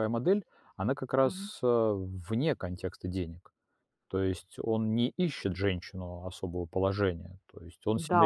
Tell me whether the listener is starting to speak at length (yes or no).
yes